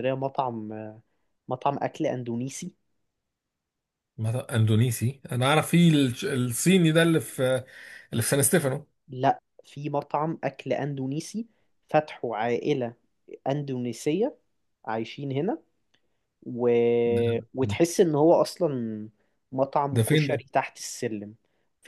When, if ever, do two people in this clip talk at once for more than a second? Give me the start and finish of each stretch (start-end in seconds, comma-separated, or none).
none